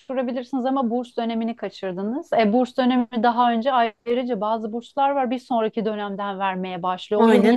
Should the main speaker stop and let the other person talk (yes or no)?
no